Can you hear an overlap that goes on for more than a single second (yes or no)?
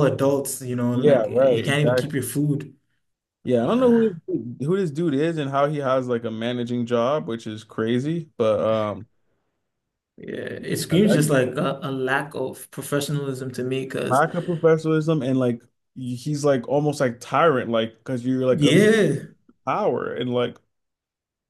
yes